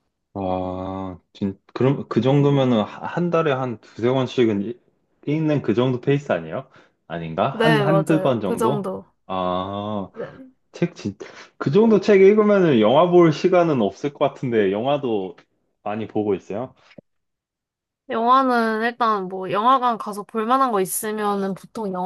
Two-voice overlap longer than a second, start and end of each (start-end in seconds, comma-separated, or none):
7.5-8.9